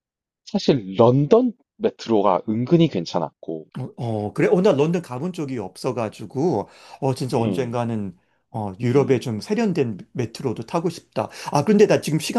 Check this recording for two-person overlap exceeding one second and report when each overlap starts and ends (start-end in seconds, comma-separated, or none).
none